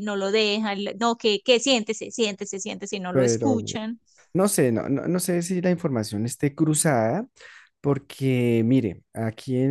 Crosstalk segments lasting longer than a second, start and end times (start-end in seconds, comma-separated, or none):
none